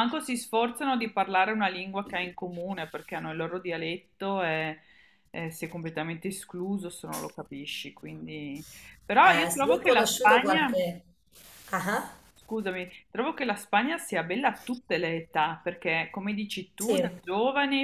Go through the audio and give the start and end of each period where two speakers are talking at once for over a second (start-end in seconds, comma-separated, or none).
9.2-10.8